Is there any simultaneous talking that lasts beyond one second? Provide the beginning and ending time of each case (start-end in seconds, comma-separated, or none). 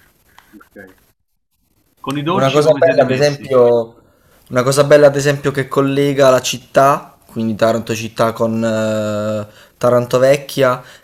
2.3-3.5